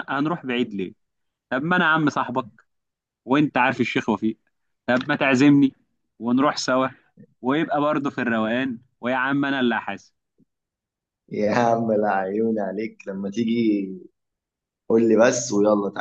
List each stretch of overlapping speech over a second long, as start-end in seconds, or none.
none